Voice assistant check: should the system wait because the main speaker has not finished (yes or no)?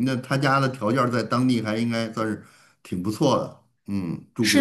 no